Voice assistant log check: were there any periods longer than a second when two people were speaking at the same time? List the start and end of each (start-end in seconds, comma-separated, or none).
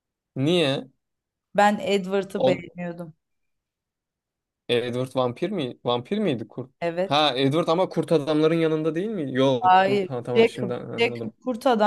9.6-11.3